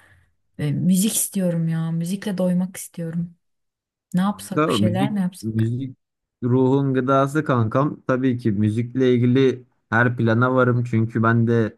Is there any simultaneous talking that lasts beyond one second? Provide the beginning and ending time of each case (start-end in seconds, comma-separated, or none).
4.3-5.7